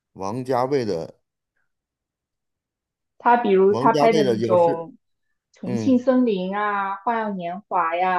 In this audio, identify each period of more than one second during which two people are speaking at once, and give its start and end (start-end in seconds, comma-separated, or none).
3.7-4.9